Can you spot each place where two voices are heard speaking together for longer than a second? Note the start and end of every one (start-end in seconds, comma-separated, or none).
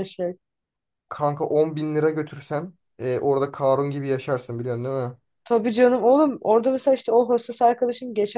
none